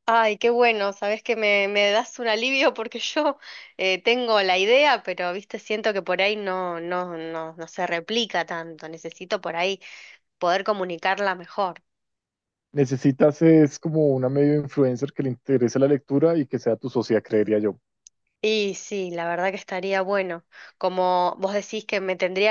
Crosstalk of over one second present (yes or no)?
no